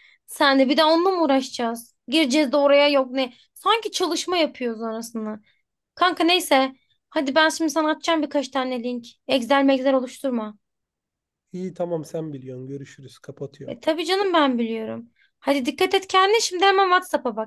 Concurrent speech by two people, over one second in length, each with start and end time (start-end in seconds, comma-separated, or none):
none